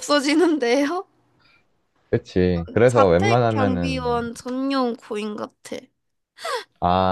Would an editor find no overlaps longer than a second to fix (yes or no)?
no